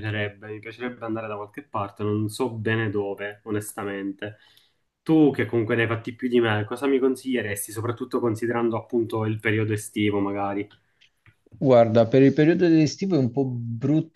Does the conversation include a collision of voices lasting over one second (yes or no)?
no